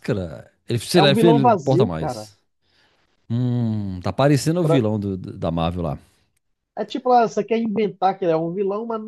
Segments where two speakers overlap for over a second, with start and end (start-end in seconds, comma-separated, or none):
0.9-2.3